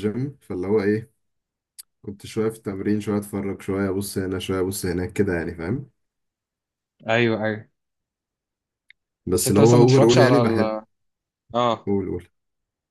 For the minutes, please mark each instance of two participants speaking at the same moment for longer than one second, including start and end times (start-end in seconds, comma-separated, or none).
9.3-10.8